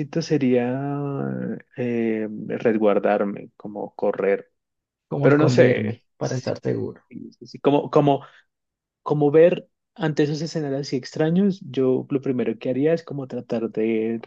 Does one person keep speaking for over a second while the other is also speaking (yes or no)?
yes